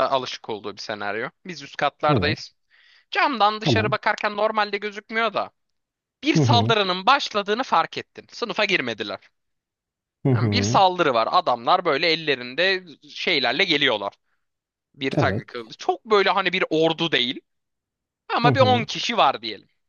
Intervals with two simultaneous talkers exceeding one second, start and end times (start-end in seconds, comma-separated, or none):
none